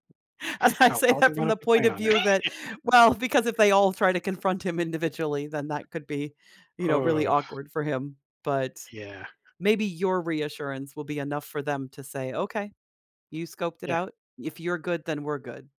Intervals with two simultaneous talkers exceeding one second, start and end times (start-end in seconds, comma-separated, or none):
0.9-2.1